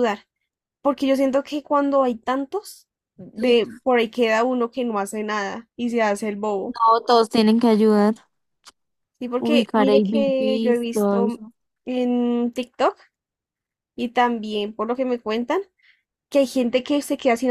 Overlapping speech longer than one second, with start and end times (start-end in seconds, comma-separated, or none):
9.4-11.4